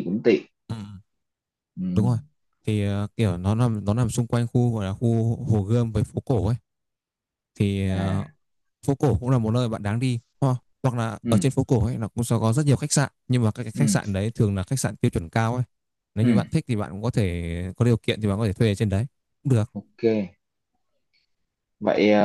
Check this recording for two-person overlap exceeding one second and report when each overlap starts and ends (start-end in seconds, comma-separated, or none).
none